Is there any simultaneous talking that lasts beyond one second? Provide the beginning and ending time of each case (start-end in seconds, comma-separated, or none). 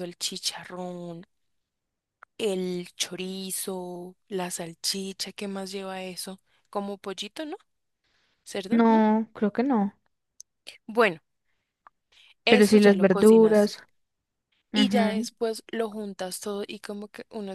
12.5-13.7